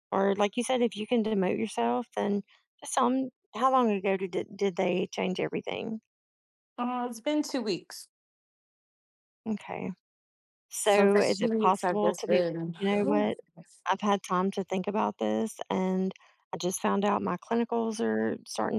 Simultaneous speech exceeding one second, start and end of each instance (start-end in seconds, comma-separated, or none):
10.8-12.8